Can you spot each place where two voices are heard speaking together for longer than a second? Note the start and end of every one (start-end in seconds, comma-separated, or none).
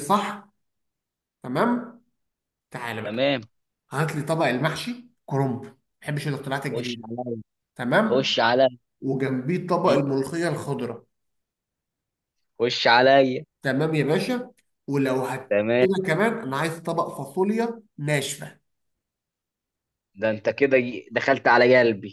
none